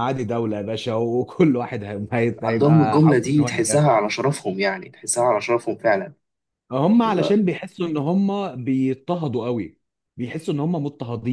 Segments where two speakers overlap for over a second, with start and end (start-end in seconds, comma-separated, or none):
2.4-4.0